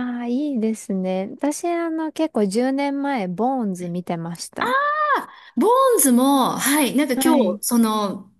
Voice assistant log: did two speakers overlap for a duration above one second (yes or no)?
no